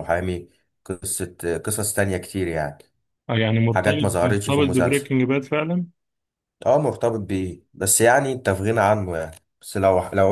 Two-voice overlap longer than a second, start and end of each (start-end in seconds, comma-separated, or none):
3.7-5.1